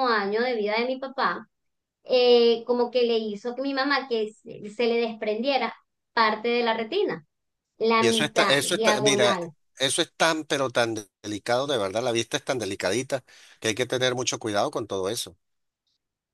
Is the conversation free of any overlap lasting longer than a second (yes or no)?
no